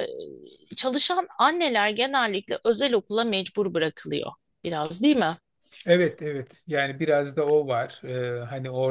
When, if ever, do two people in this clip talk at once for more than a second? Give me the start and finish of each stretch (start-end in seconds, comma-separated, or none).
none